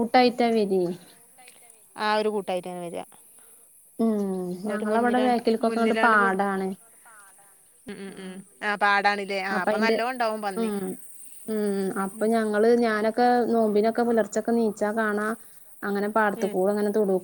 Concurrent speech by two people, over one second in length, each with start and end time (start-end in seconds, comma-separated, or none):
4.7-6.4